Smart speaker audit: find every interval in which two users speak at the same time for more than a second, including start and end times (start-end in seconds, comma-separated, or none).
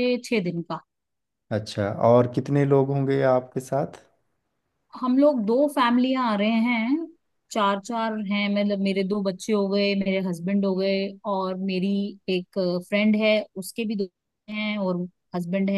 none